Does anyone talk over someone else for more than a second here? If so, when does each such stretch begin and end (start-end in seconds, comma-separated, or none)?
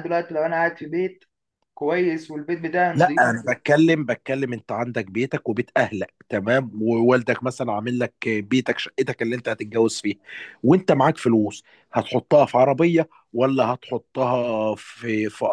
none